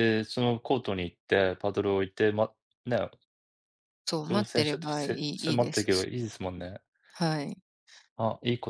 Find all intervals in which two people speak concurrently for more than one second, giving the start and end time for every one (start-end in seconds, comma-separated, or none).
4.3-6.1